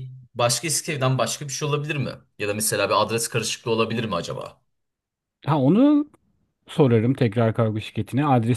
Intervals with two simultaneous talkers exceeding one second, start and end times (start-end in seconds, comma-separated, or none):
none